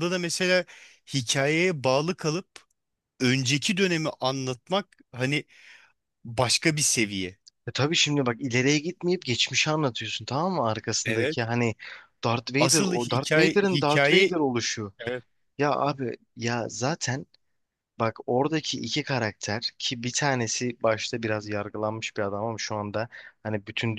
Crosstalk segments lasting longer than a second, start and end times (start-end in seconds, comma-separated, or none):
12.6-14.3